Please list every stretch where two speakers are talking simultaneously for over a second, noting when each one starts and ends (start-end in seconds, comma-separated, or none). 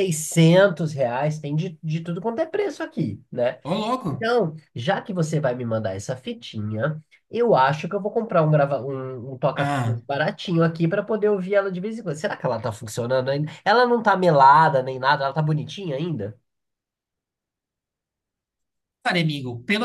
none